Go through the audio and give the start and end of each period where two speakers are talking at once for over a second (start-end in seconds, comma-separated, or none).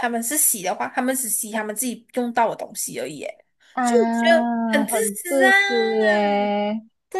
3.8-5.5